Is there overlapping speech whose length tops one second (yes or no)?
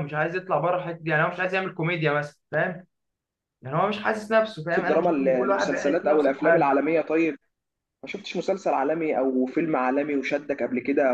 yes